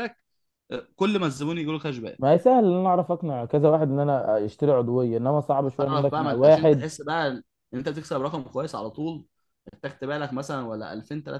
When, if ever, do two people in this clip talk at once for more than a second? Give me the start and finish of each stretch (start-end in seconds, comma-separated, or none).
5.7-6.9